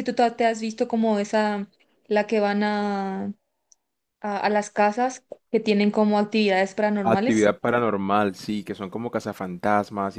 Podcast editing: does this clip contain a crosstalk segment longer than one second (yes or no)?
no